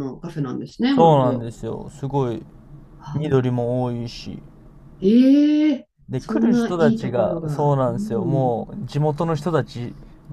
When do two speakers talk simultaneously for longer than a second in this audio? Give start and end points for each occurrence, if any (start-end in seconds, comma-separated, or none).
6.1-8.6